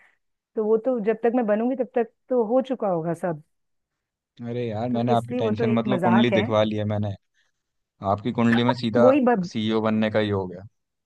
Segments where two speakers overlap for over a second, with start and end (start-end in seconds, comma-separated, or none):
4.9-6.4